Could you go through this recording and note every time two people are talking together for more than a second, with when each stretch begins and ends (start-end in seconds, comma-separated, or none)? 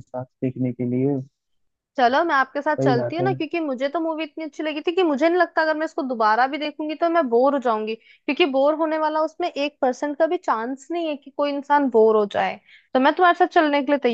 none